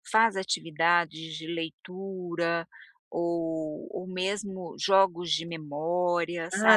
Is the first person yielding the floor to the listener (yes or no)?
yes